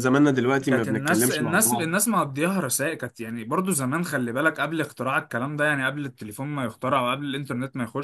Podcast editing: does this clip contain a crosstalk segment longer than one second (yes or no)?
yes